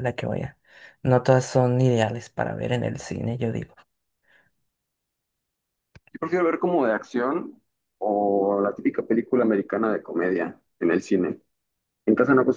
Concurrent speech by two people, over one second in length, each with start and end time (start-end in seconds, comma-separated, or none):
none